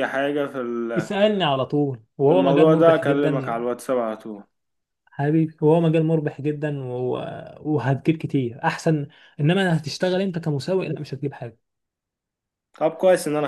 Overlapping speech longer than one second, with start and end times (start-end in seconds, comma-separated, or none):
2.2-3.6